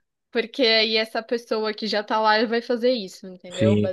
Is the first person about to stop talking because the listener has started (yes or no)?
yes